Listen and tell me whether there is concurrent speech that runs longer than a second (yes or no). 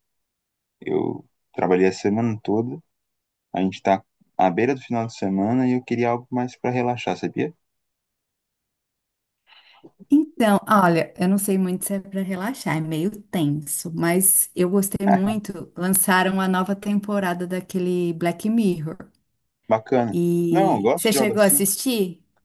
yes